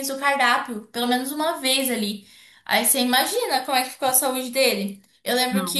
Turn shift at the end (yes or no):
no